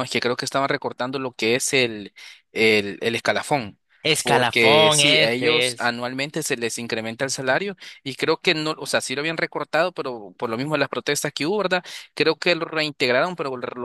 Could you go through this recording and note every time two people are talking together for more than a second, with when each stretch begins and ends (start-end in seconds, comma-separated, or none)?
4.2-5.9